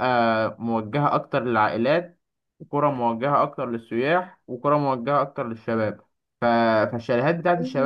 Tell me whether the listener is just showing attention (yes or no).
yes